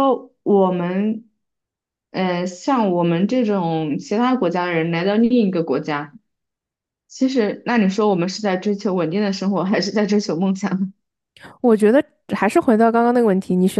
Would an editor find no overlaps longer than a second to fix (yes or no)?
yes